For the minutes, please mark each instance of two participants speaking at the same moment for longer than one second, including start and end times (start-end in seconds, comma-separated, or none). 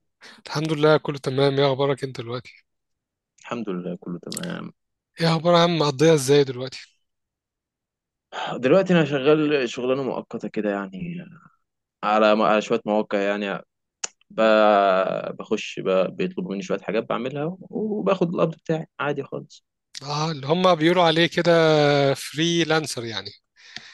none